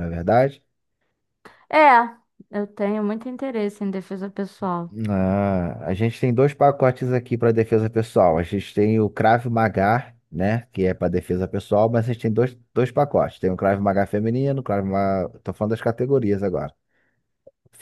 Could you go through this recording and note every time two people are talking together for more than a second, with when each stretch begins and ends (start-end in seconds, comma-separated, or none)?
none